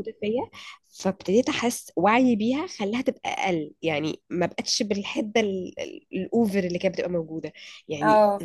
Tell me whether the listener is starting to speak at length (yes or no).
no